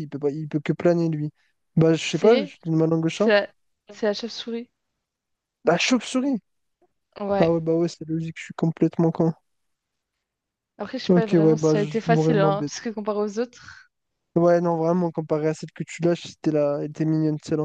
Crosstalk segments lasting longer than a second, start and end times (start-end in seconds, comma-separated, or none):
11.1-12.7